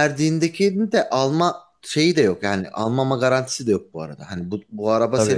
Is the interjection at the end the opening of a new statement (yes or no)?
no